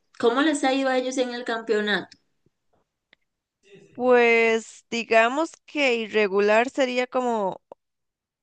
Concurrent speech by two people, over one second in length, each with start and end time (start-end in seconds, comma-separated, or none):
none